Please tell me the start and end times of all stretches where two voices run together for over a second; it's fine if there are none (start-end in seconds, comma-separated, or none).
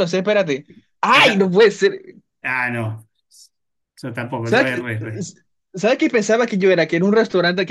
none